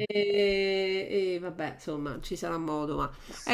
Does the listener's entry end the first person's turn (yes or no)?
no